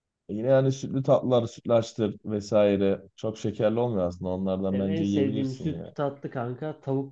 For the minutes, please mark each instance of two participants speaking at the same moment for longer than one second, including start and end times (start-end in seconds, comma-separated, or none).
4.7-6.0